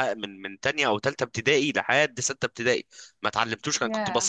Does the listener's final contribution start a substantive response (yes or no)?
no